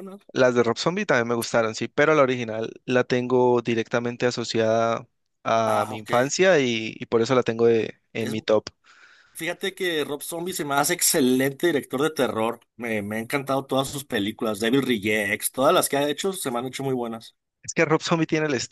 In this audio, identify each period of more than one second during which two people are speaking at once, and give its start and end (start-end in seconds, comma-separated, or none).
none